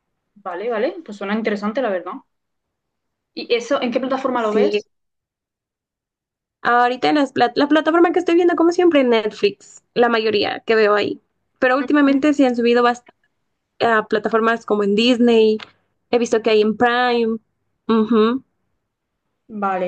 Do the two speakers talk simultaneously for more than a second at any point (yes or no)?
no